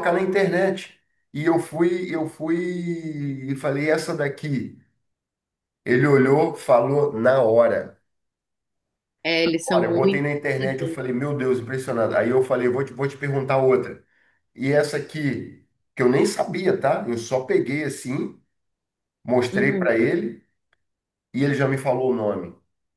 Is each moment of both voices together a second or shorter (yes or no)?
no